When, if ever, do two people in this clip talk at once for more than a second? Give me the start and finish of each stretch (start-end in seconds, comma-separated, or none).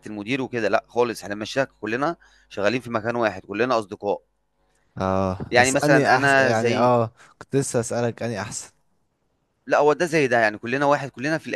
5.5-6.9